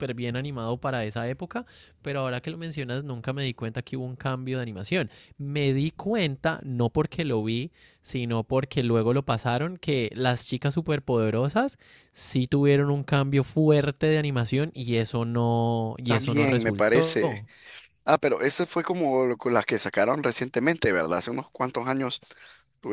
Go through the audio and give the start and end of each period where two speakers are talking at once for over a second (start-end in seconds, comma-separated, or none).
16.1-17.4